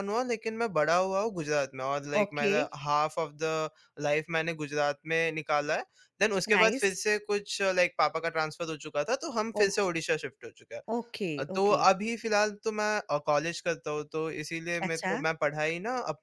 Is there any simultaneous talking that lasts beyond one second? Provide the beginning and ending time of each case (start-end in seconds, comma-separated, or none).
none